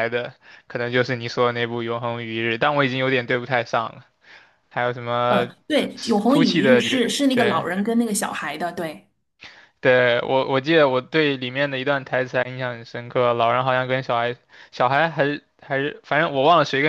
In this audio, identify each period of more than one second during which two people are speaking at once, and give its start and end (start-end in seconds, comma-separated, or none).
6.3-7.6